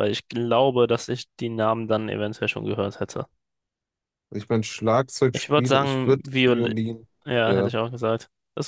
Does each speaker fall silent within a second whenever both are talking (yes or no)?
no